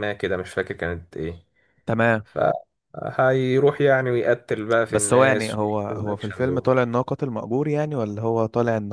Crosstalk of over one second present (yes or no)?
yes